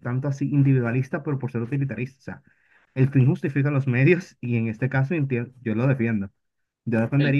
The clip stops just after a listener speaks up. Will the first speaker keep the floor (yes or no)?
yes